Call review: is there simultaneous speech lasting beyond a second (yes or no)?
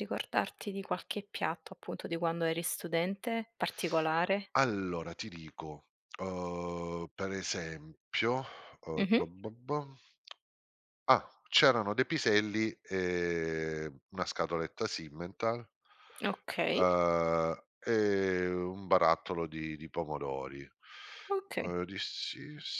no